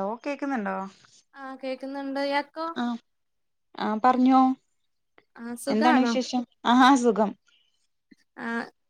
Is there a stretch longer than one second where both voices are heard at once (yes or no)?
no